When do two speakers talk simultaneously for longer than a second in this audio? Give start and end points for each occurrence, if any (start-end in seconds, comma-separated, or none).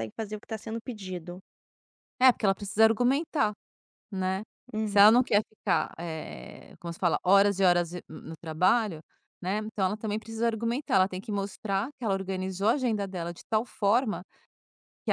none